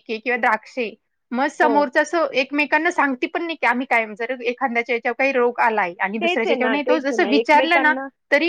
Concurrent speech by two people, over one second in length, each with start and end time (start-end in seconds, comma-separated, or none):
6.2-7.9